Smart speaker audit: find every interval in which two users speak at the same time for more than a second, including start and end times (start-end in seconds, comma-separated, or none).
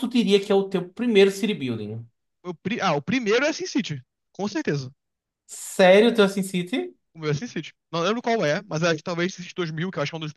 none